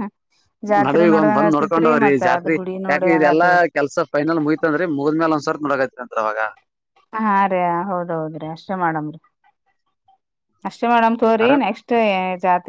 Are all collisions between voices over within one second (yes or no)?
no